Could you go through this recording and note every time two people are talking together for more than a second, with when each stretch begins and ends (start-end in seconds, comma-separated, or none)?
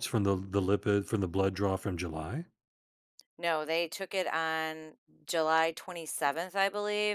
none